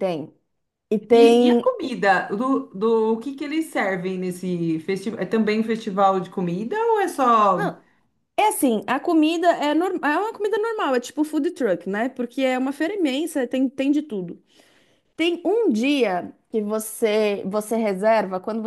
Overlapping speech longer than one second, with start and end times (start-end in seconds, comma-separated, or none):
none